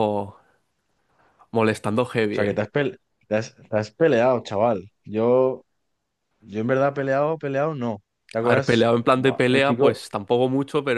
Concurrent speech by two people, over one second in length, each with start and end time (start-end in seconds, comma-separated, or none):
8.4-10.0